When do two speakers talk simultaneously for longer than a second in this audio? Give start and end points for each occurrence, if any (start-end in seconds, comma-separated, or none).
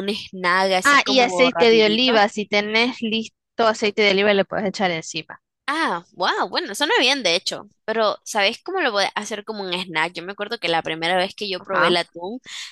0.8-2.1